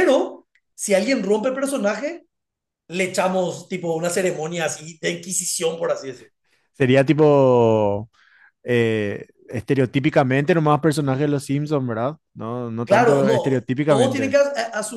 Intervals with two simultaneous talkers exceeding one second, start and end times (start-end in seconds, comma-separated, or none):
12.8-14.4